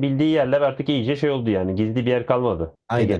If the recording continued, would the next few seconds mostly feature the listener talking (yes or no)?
yes